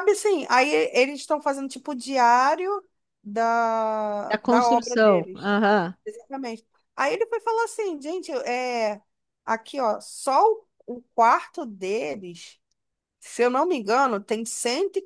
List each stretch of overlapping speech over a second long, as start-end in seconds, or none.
4.3-5.5